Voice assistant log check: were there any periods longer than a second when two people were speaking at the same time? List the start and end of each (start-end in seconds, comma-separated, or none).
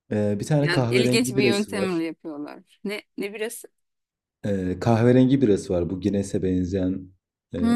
0.6-2.0